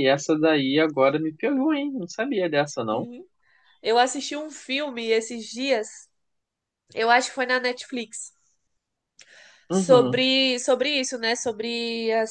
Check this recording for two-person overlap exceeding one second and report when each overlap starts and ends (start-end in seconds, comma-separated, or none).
none